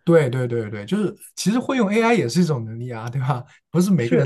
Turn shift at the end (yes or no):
no